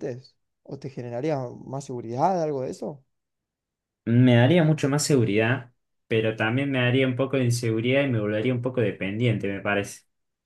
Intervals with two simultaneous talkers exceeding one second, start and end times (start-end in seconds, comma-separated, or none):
none